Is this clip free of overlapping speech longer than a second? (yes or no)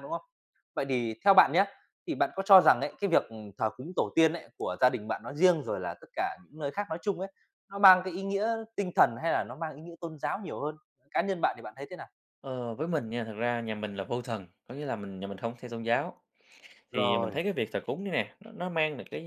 yes